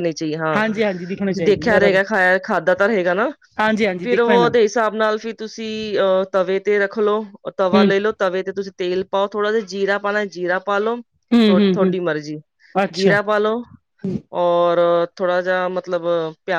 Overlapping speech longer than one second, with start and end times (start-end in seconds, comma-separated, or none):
0.6-2.0